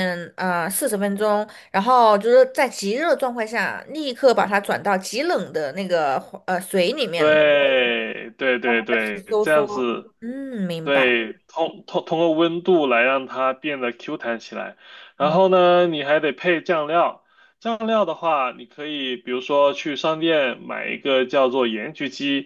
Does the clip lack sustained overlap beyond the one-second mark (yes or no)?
no